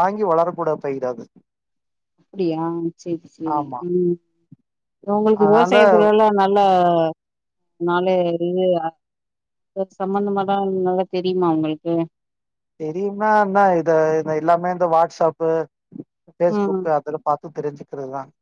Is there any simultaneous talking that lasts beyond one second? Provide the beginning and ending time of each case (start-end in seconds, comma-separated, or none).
none